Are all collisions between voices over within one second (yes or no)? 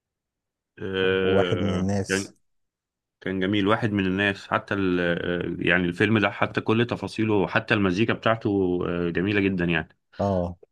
no